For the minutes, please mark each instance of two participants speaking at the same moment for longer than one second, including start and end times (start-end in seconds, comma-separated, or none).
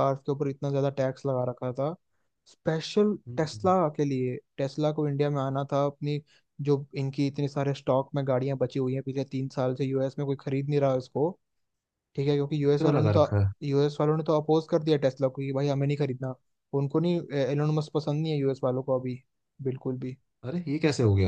none